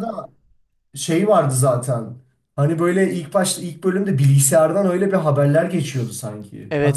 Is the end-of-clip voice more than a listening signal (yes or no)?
yes